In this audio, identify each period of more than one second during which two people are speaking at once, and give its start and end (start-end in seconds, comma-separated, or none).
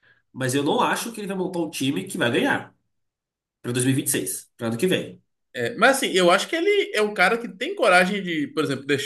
none